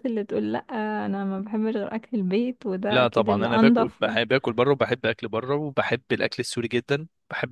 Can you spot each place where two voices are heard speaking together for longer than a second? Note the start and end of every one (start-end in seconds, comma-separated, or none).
2.9-4.2